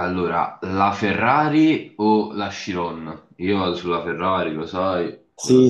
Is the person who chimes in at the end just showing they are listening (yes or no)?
no